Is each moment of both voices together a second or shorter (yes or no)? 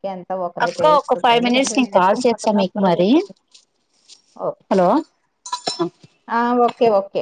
no